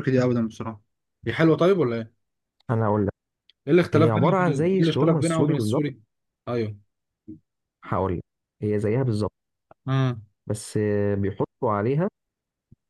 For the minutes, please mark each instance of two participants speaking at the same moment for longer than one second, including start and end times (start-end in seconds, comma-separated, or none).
3.9-5.8